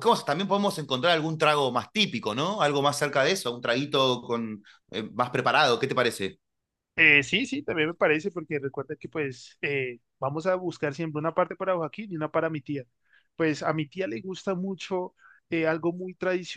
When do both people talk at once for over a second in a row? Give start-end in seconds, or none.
none